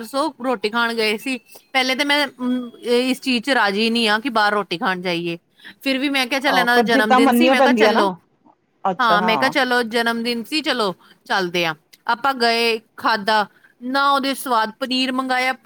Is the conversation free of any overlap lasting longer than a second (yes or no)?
no